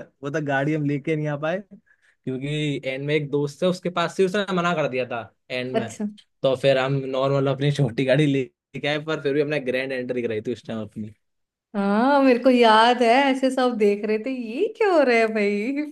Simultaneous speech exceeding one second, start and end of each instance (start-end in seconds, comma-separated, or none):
none